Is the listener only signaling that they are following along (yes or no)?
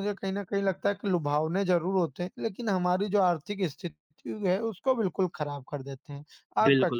no